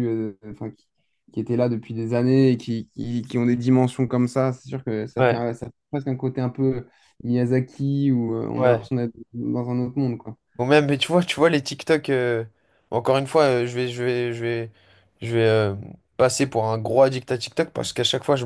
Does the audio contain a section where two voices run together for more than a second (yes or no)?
no